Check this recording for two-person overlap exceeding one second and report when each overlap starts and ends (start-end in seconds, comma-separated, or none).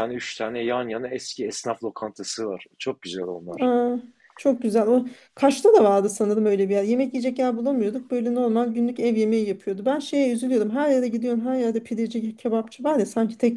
none